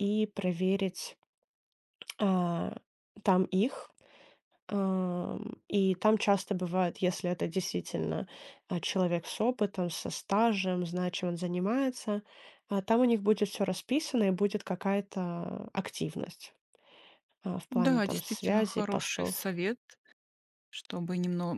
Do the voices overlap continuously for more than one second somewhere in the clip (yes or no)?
yes